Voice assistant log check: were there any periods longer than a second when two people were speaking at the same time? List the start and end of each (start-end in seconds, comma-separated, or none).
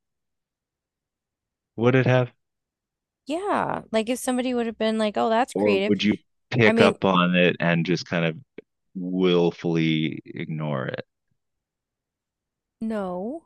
none